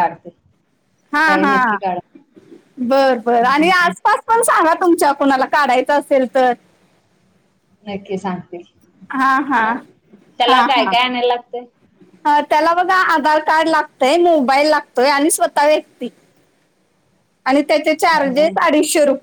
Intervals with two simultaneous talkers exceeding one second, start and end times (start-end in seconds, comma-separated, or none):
none